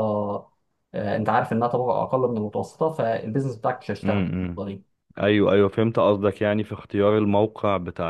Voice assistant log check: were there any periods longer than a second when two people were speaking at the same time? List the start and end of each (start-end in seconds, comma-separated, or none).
none